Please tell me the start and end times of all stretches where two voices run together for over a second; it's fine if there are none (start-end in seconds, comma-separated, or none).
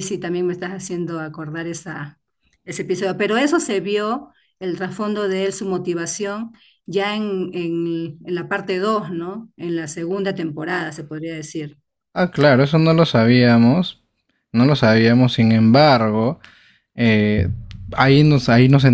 none